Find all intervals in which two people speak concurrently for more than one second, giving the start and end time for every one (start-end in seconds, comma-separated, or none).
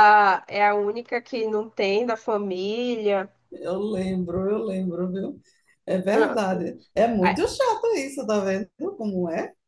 none